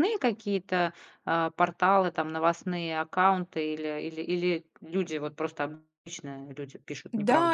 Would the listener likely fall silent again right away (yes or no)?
no